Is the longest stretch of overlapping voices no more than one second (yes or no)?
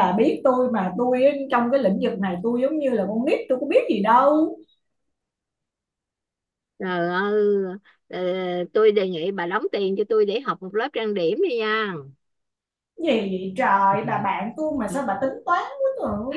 yes